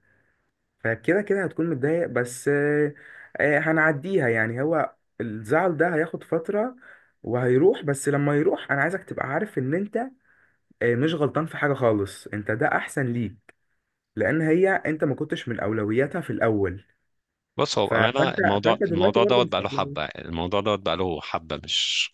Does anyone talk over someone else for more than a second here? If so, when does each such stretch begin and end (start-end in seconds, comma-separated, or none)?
17.8-20.0